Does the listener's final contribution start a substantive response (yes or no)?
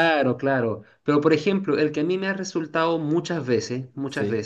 no